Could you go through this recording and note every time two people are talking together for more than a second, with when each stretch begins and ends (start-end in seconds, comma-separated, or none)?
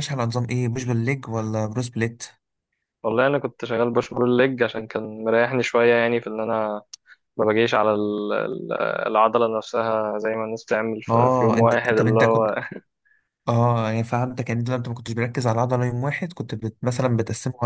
11.1-12.5